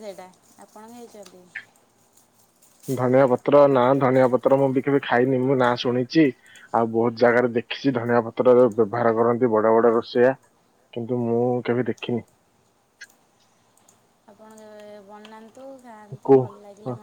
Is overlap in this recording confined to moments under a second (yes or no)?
yes